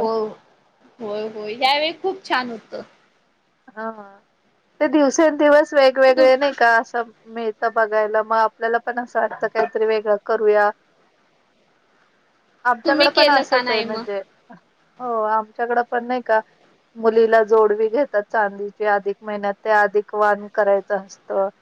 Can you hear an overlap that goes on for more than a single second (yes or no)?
yes